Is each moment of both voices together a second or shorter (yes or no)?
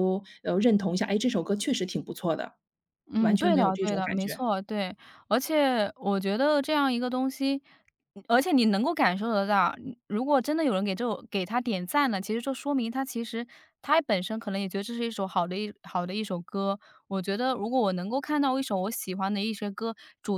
no